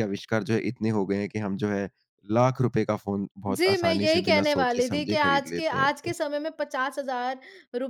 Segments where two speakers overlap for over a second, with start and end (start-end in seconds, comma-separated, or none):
3.5-6.1